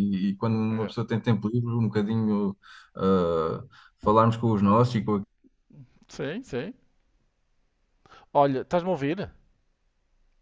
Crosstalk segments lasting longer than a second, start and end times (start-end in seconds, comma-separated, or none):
none